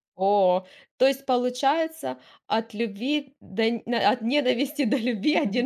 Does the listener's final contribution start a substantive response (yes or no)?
yes